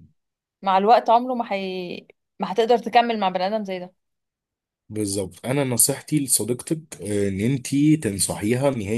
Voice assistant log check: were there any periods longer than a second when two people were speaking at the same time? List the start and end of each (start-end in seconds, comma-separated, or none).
none